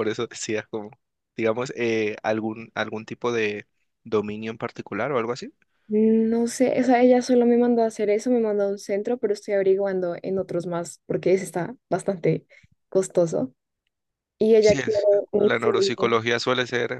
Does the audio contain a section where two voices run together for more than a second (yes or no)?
yes